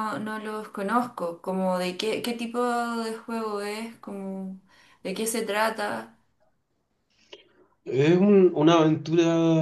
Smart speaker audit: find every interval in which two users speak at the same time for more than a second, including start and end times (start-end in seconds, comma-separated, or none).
none